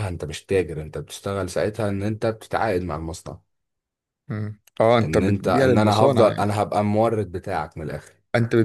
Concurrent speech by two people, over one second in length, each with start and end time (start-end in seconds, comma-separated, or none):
5.0-6.5